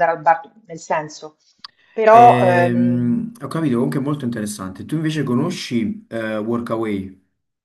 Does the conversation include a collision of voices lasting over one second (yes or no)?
yes